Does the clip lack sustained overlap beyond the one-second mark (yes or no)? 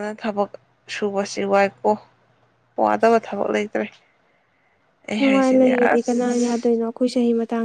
no